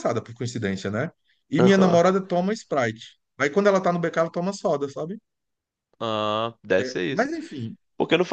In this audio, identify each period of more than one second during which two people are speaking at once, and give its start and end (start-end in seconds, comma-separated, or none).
none